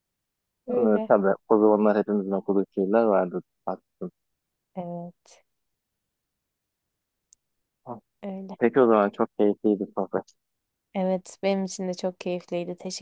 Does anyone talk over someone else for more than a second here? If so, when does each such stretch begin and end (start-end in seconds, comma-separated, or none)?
none